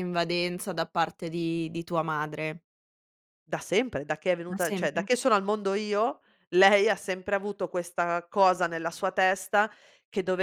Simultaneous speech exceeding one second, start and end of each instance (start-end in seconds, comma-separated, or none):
none